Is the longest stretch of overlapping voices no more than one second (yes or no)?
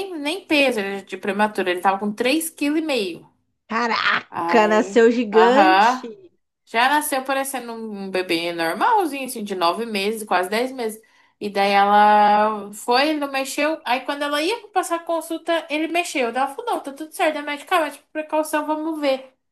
no